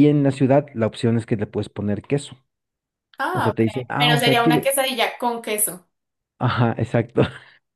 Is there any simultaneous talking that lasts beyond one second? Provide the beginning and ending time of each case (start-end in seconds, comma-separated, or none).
3.3-4.7